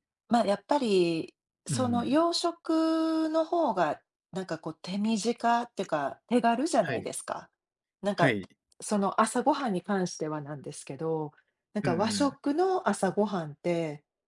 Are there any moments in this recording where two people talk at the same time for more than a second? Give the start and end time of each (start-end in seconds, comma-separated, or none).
none